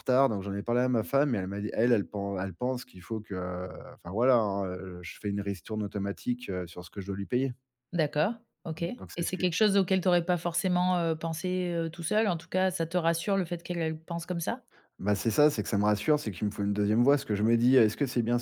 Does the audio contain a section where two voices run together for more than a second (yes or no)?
no